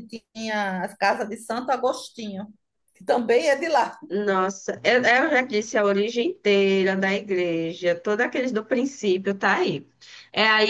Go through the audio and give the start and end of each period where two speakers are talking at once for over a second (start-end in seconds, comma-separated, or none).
none